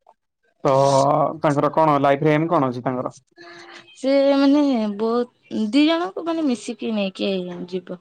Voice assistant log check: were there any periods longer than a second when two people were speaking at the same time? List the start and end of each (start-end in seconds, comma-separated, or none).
none